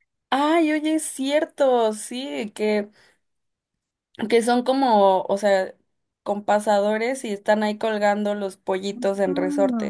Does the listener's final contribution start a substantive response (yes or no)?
yes